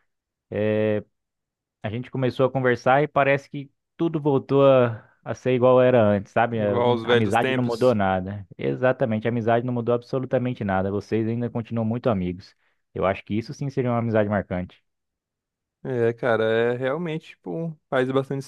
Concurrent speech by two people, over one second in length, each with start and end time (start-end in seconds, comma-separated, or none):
6.5-8.0